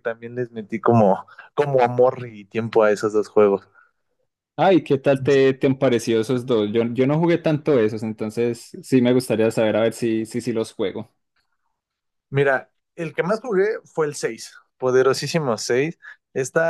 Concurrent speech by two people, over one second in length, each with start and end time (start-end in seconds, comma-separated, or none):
none